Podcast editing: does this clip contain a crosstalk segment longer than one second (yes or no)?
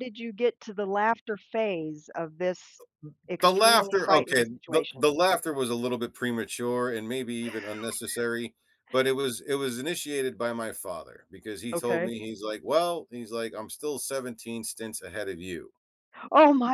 yes